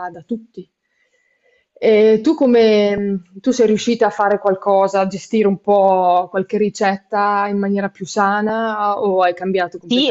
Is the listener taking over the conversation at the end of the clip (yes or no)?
yes